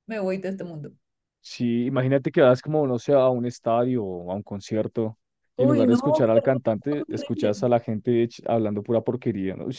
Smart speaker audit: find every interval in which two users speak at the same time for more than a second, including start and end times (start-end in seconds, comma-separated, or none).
5.5-7.5